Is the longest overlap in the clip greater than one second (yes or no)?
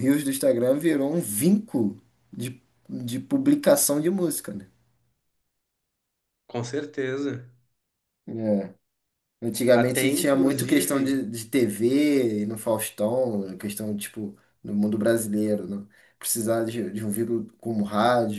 yes